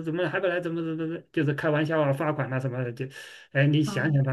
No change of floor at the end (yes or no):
yes